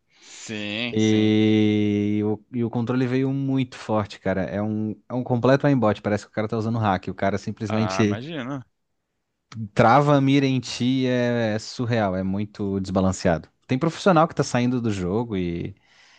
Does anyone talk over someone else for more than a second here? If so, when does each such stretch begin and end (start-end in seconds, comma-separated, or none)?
none